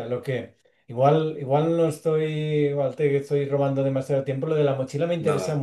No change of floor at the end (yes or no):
yes